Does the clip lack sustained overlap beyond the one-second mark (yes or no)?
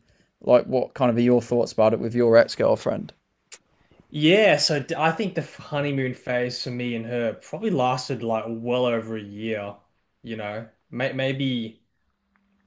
yes